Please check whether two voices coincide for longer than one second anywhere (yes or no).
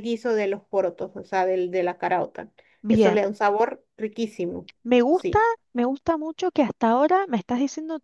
no